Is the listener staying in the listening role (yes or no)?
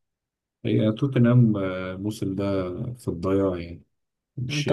no